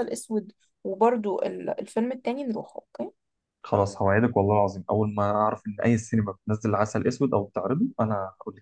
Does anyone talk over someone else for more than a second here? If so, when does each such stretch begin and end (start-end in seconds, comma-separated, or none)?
none